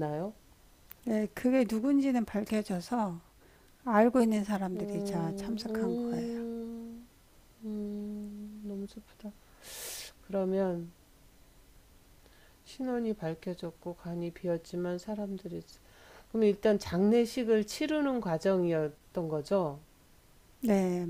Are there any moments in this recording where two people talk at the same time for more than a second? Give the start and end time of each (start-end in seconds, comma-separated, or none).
4.7-6.2